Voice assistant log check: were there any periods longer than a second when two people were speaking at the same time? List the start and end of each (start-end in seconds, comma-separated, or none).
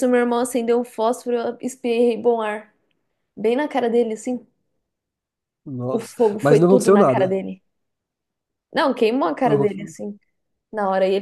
5.9-7.4